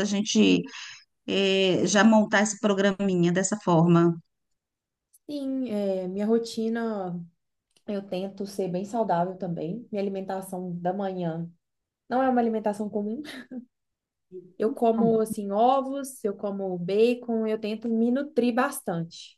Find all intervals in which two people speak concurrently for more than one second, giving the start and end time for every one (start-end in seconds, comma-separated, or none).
none